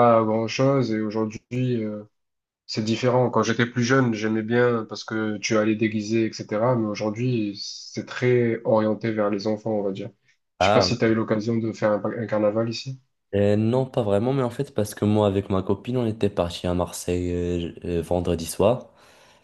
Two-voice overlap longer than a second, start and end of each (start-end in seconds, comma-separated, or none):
none